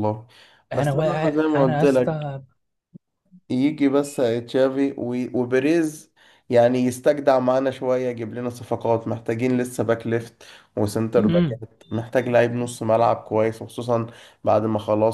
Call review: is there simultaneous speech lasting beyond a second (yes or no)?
yes